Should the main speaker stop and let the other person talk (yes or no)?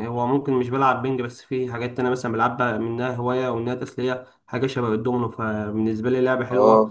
yes